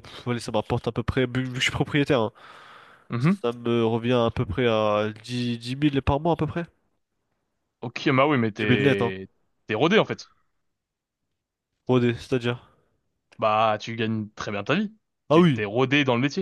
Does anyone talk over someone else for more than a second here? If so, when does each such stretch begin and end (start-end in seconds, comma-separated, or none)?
none